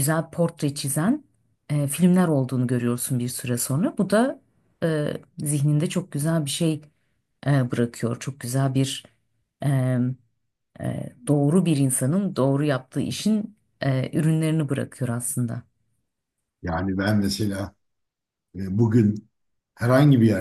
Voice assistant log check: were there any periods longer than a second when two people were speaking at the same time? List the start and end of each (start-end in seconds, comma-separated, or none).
none